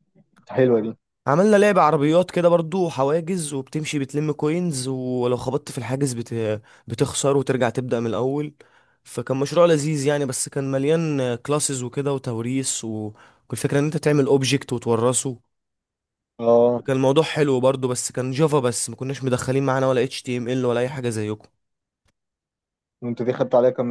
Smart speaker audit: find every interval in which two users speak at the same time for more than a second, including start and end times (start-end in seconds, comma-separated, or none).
none